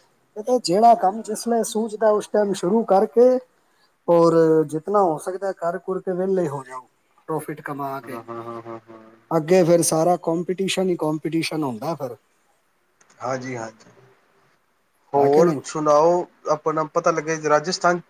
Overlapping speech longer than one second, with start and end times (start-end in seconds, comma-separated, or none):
none